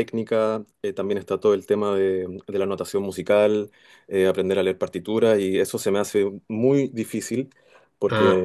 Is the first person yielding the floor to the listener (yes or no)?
no